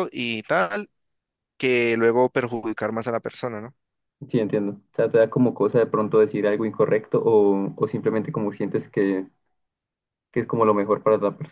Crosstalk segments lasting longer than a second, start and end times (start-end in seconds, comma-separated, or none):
none